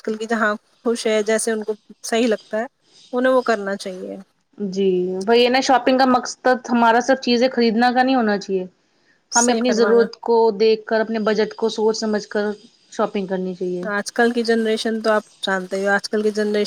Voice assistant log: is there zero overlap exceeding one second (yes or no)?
yes